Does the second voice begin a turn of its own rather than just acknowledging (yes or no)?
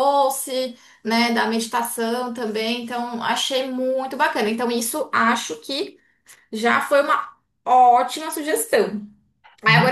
no